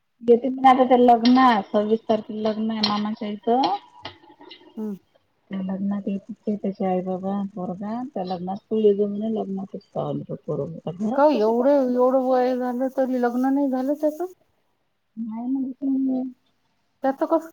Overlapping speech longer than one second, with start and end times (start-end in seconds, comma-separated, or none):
none